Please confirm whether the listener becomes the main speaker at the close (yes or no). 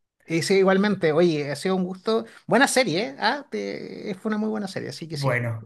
yes